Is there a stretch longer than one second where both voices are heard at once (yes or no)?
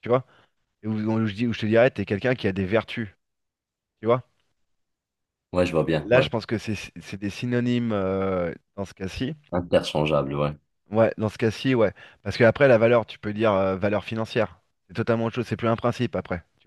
no